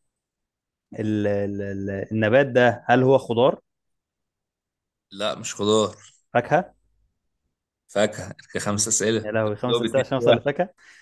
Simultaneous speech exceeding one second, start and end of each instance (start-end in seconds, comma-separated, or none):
8.7-10.4